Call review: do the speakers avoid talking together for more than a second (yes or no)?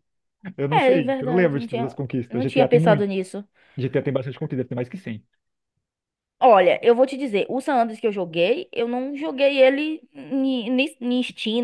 no